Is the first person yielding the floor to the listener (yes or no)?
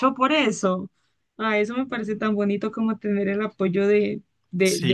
yes